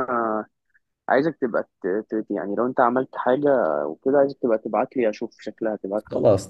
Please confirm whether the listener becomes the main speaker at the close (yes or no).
yes